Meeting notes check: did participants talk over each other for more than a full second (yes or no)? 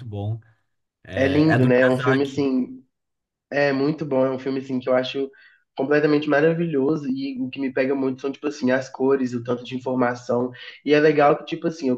yes